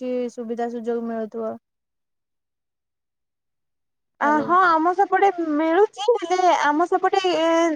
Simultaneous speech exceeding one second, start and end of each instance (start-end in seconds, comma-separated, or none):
none